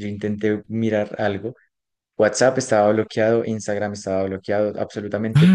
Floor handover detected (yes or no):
yes